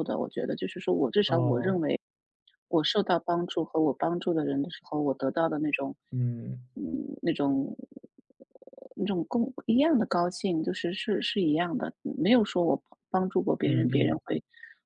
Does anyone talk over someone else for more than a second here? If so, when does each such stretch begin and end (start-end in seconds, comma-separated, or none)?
none